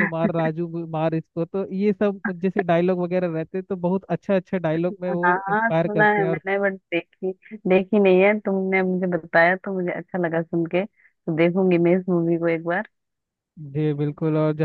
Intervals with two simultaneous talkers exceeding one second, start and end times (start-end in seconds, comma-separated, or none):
5.1-6.4